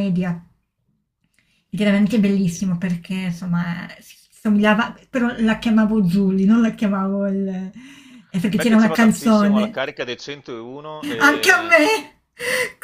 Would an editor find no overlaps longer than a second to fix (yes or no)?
no